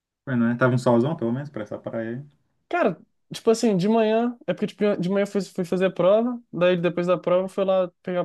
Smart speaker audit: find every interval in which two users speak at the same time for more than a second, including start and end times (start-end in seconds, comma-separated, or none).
none